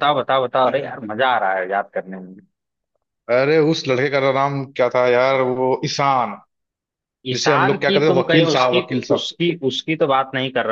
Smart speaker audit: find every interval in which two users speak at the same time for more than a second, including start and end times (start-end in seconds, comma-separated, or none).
7.3-9.3